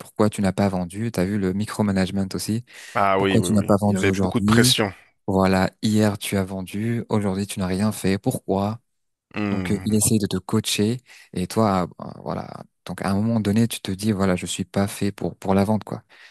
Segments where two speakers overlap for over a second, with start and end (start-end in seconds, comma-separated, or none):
3.2-4.8